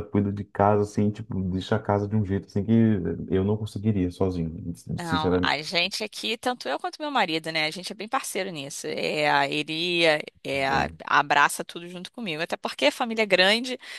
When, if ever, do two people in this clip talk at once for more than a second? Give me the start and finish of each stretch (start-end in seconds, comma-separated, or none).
none